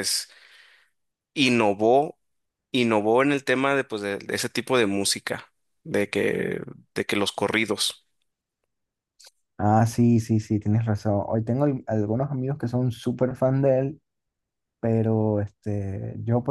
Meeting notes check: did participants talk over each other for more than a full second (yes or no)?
no